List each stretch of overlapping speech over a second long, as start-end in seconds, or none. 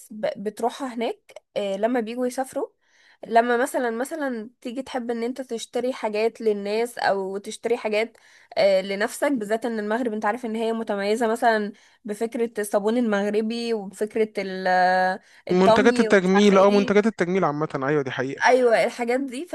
15.5-17.0